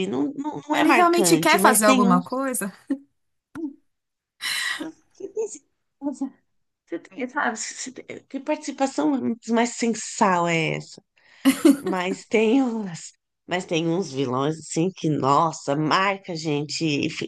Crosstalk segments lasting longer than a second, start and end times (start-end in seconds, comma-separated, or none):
0.7-2.2